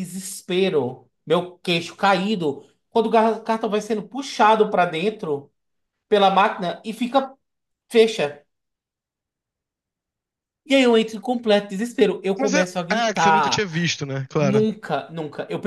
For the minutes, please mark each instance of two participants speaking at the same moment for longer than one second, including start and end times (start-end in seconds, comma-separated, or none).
12.4-13.7